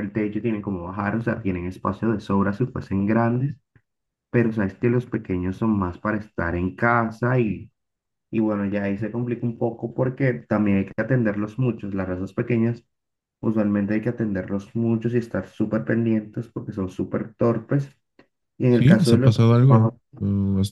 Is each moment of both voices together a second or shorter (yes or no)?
no